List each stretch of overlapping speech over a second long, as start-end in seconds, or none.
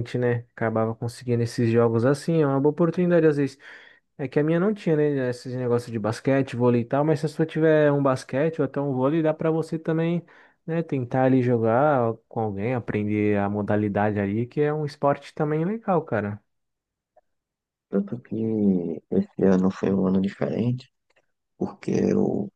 none